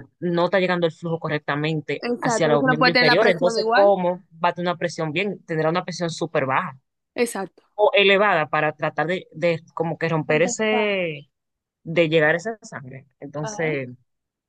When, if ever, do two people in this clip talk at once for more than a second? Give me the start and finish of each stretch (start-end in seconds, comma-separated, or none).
2.0-3.9